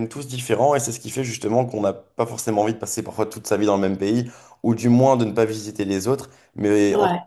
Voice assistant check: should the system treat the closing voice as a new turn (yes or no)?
no